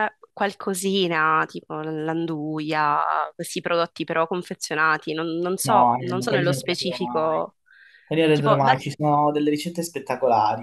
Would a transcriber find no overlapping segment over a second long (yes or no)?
no